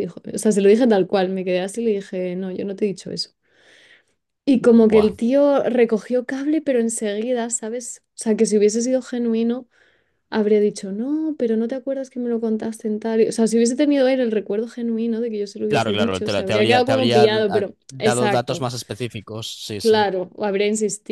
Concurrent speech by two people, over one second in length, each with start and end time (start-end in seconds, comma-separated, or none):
15.7-18.7